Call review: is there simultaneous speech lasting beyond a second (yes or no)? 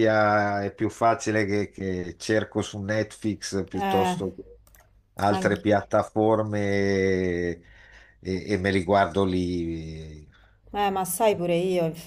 no